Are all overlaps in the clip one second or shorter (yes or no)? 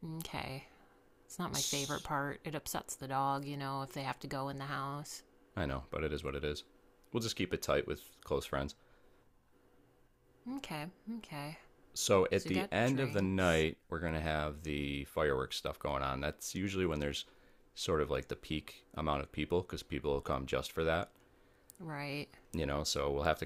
no